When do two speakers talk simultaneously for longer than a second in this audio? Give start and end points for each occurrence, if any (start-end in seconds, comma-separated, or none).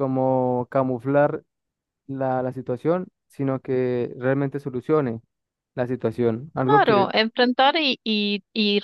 none